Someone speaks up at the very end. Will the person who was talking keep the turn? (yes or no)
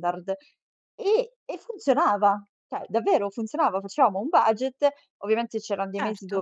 yes